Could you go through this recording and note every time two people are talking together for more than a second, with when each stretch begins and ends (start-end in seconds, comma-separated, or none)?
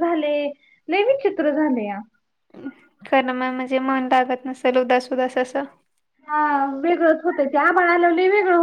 none